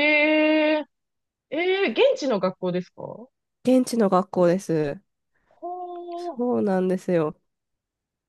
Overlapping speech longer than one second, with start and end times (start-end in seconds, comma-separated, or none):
none